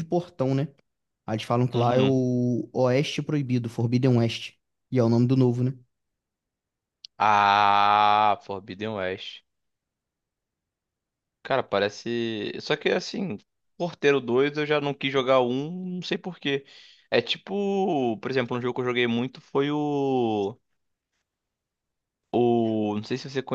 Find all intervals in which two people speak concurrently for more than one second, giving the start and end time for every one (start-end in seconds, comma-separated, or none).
none